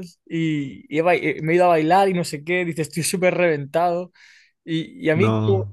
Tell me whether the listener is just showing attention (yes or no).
yes